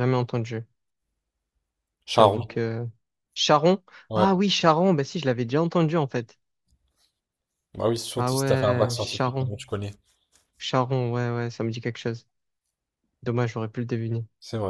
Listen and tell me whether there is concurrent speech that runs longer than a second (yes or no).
yes